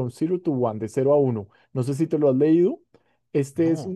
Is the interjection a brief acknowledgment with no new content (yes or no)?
yes